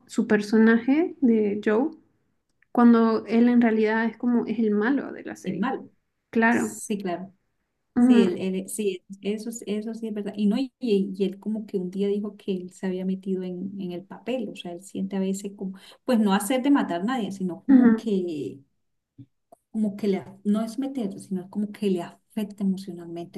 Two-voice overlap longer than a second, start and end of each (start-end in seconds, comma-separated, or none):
none